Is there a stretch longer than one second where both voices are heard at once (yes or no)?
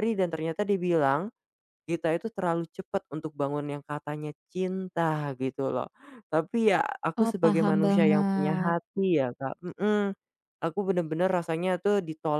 yes